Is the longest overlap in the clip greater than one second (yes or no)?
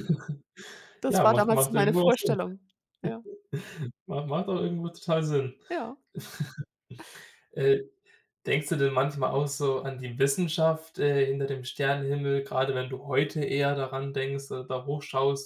yes